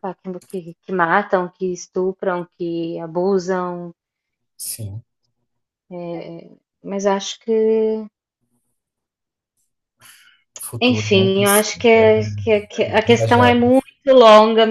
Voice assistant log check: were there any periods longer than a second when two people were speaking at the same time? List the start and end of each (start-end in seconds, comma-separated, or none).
10.8-12.4